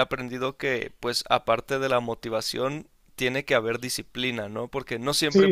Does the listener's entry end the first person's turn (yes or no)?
yes